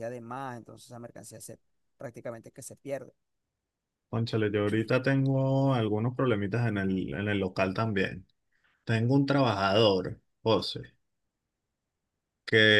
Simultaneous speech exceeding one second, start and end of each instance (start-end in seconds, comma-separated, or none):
none